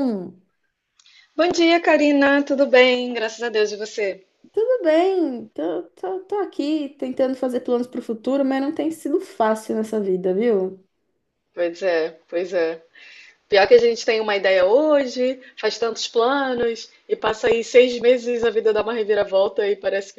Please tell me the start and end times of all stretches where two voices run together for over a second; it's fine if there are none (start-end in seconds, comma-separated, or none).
none